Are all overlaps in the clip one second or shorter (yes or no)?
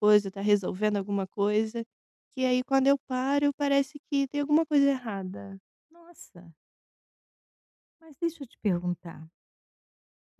yes